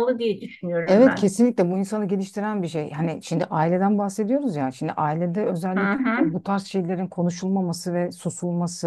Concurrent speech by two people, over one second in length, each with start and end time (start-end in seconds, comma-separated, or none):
none